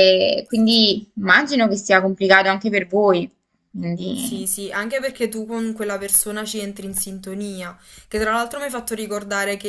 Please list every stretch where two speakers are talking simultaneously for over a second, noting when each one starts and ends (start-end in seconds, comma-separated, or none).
none